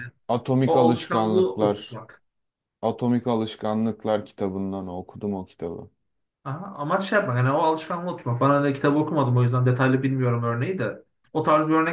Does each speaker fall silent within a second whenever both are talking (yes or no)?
no